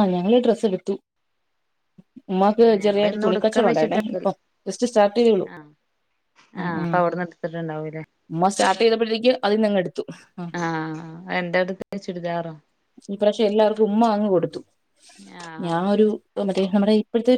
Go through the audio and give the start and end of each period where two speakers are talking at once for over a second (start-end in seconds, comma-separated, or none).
2.8-4.3